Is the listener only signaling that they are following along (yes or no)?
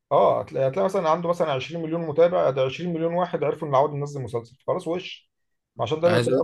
yes